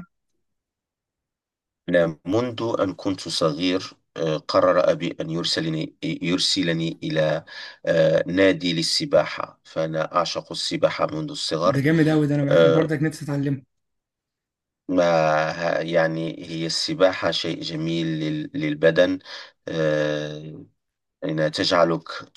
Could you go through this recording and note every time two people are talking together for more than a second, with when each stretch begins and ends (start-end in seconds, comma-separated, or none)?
none